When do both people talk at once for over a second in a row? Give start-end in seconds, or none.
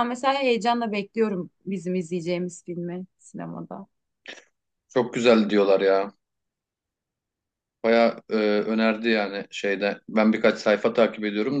none